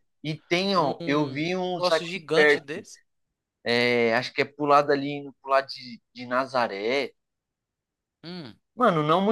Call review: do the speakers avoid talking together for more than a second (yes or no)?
no